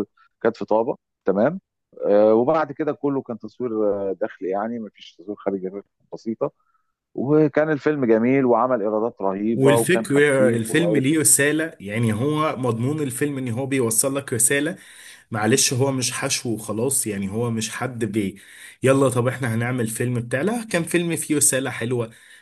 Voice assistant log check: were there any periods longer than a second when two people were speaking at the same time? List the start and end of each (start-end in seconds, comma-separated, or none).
9.5-11.1